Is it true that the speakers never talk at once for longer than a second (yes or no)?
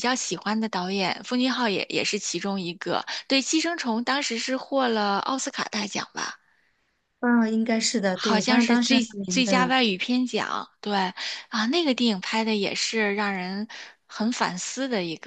no